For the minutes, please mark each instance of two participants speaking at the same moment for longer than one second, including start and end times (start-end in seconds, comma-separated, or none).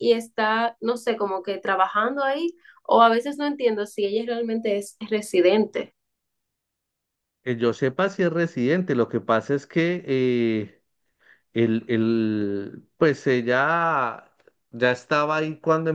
none